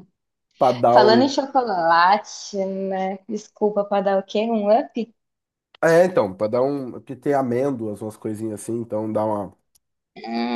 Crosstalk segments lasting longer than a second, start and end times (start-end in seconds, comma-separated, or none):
none